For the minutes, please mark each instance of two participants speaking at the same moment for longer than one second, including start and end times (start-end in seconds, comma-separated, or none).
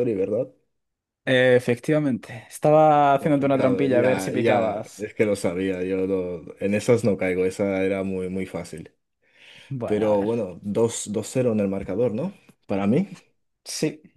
3.2-5.1